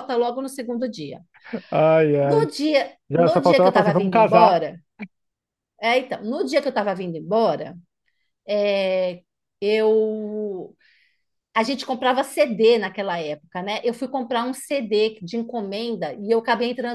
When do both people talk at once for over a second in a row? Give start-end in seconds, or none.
3.3-4.6